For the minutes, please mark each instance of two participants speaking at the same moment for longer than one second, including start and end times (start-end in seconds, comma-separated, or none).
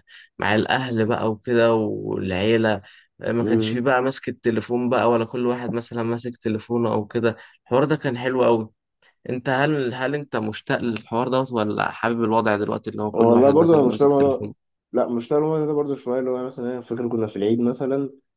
13.1-14.4